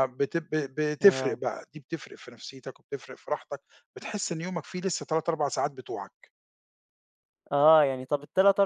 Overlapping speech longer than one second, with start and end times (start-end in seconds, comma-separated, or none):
none